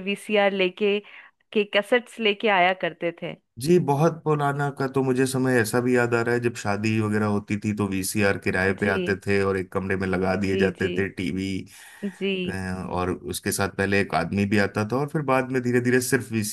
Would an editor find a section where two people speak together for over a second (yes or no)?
no